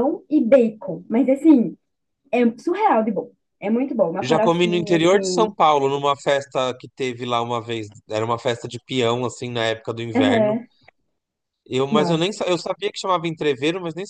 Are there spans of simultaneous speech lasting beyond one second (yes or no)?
yes